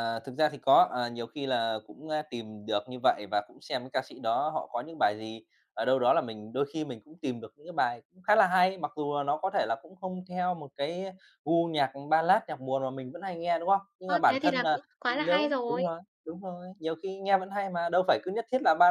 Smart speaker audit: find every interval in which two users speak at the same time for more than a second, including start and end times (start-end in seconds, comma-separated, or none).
14.1-15.8